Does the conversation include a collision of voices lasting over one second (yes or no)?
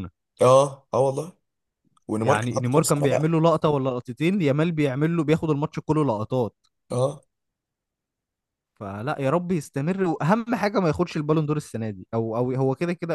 yes